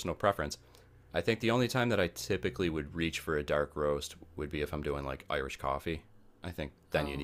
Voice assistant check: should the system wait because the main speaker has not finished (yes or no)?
yes